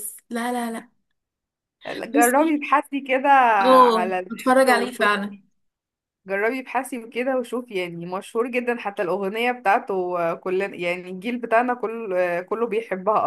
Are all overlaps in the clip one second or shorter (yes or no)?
no